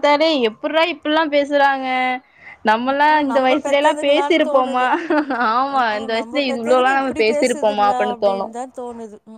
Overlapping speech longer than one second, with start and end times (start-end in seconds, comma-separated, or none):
2.9-4.8, 5.5-8.5